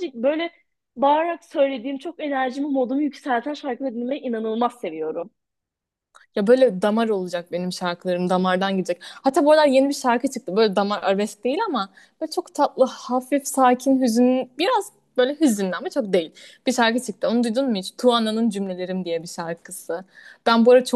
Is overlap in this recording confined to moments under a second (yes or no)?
yes